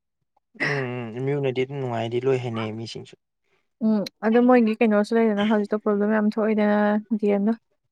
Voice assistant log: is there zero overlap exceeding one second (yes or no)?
yes